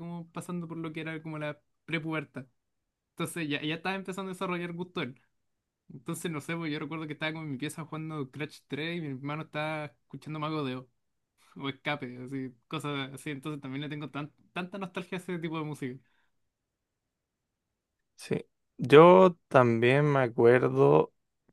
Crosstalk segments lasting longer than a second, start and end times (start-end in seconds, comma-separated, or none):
none